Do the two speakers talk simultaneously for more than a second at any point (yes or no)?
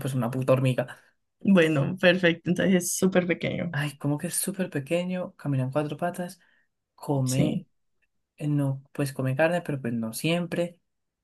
no